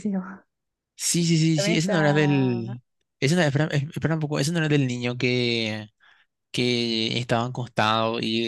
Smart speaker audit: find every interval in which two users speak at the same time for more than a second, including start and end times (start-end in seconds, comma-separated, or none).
1.6-2.8